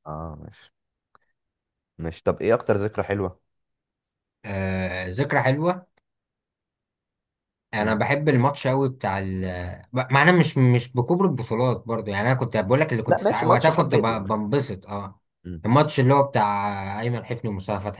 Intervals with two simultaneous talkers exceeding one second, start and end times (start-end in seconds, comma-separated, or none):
13.0-14.4